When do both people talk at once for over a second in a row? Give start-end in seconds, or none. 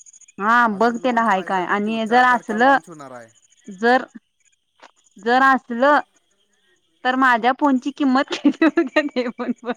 0.8-2.8